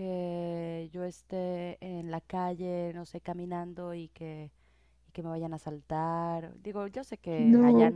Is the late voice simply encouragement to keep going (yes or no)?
yes